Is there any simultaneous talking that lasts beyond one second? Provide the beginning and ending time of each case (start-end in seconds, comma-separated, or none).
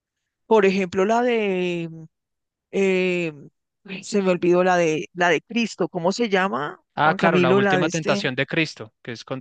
7.0-8.3